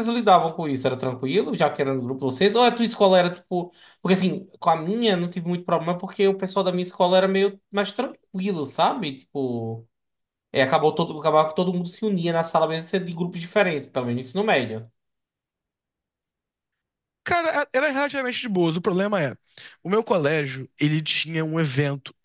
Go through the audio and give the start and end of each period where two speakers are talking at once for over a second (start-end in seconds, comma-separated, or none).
none